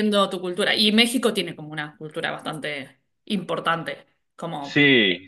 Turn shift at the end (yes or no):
yes